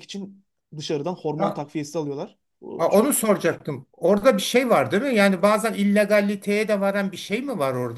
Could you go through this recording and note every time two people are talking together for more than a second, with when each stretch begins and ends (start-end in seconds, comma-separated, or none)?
none